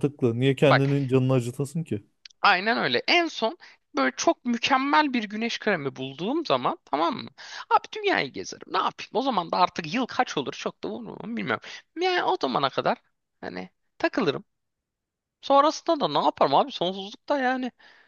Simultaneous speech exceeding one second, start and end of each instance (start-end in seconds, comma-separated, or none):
none